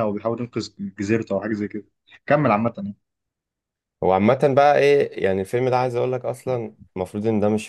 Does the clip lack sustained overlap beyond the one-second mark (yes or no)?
yes